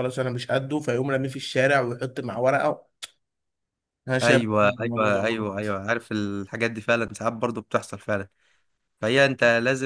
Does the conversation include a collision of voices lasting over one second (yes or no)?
yes